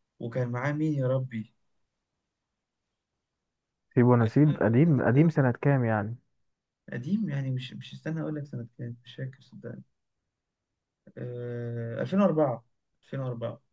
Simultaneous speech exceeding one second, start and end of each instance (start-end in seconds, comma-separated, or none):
4.2-5.5